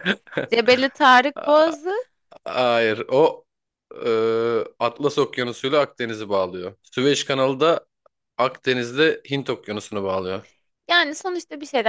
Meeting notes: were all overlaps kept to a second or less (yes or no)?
yes